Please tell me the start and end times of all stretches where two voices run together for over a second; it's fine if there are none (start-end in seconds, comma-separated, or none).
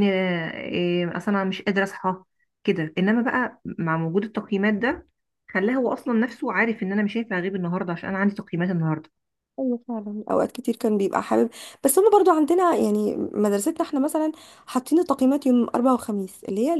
none